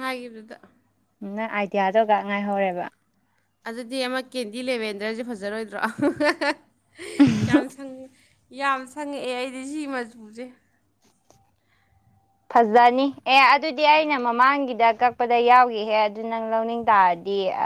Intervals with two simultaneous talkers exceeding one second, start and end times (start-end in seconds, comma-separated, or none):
none